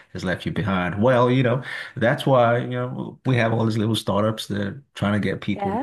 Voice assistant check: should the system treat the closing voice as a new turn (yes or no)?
no